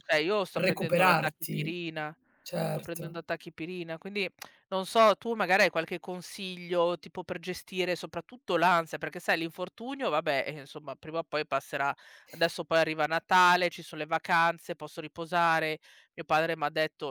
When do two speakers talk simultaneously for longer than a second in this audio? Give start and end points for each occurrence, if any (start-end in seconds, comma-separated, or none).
0.5-1.8